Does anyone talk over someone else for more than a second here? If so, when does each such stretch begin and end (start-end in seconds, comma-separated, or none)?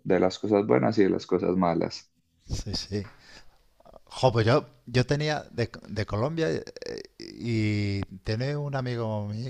none